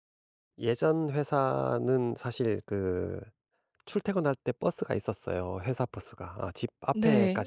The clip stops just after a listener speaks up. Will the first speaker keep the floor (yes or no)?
yes